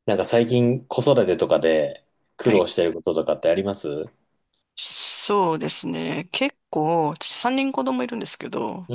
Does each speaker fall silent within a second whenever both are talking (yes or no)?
yes